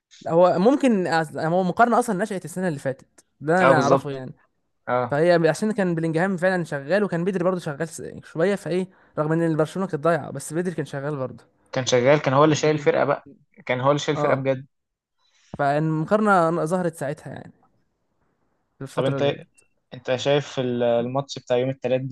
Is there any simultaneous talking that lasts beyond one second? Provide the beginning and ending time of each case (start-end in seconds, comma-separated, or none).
none